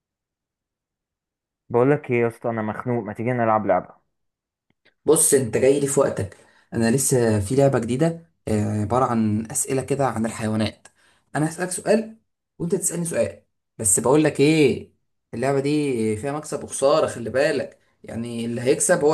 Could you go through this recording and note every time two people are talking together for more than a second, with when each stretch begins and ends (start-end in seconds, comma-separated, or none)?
none